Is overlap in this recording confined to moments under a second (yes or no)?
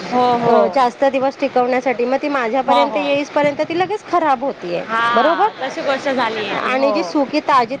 yes